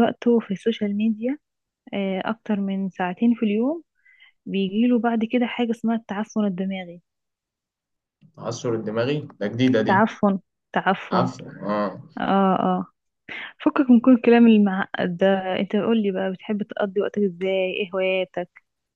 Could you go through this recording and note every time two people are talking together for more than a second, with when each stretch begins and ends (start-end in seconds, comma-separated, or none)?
none